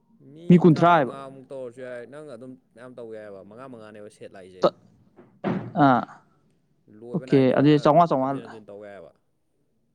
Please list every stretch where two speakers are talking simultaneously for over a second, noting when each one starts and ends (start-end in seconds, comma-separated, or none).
7.1-8.6